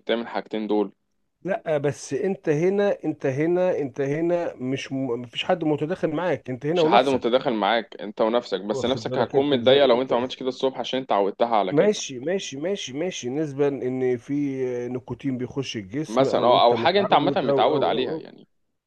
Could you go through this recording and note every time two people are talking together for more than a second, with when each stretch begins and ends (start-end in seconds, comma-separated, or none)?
8.7-10.1, 16.1-18.3